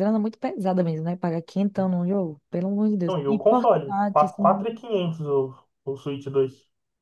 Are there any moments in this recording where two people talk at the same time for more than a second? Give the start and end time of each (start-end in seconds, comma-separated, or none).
3.0-4.7